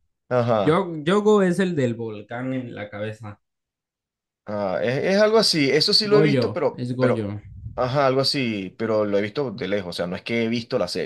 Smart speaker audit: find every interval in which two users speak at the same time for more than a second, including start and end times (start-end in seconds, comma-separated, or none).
6.0-7.3